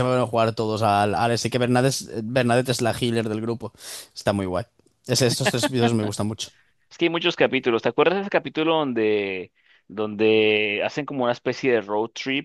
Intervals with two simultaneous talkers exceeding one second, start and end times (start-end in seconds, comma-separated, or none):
none